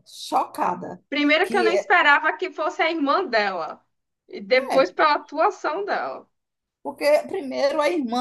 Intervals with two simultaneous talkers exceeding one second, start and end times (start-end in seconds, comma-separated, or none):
none